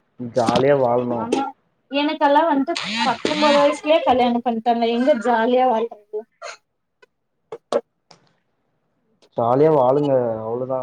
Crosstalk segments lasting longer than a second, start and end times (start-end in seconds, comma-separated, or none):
none